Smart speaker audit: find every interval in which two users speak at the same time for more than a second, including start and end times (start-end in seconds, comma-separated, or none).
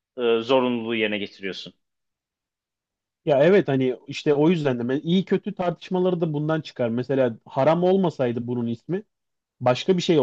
none